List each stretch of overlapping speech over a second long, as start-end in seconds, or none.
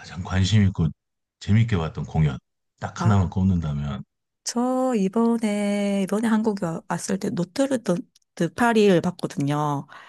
none